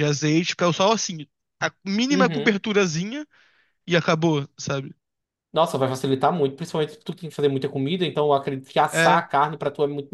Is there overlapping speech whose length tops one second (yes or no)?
no